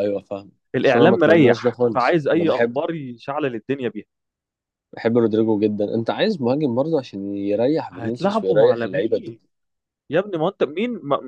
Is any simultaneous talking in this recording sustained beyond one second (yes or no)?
yes